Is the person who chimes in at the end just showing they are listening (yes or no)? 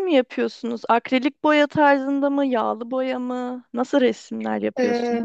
no